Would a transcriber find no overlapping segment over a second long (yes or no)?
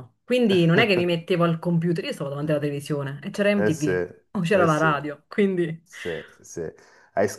no